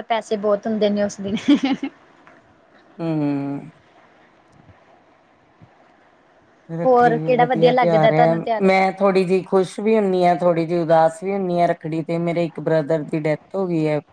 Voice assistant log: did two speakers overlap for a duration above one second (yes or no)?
yes